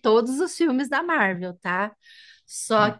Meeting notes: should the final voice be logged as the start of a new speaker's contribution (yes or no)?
no